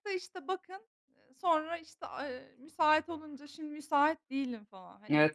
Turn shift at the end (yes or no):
yes